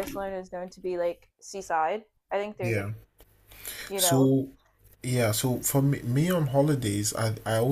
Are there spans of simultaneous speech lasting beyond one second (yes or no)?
no